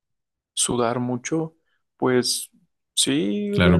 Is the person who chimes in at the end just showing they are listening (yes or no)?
no